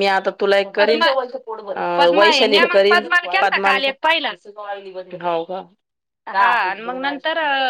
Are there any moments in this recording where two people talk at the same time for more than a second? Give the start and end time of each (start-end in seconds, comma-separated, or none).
2.2-4.3